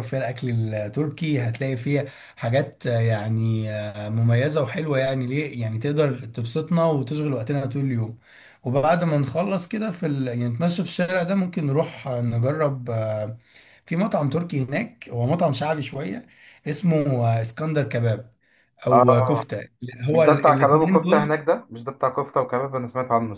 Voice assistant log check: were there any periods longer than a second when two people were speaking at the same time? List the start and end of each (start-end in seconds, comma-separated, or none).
20.1-21.4